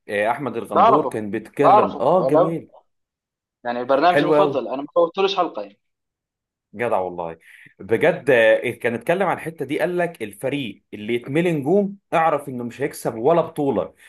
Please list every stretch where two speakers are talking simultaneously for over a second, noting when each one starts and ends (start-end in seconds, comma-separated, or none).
0.7-2.6